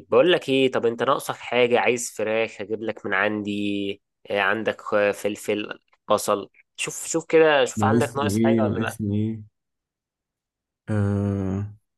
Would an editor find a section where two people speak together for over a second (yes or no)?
yes